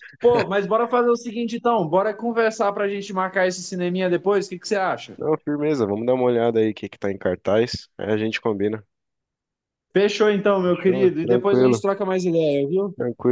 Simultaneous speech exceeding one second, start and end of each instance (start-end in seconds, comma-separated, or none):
10.6-11.8